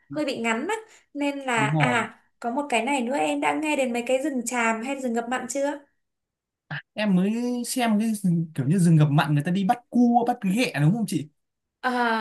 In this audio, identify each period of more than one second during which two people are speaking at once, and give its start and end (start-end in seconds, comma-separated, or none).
none